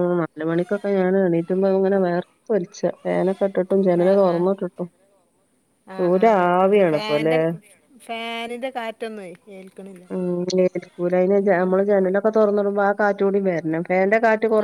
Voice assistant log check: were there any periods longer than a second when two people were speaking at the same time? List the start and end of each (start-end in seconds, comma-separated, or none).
6.0-7.3